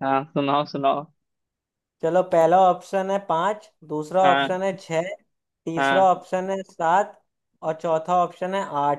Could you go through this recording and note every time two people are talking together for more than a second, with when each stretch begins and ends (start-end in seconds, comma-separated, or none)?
none